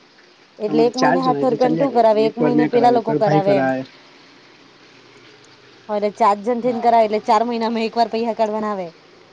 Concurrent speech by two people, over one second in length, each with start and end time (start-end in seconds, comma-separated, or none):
0.7-3.4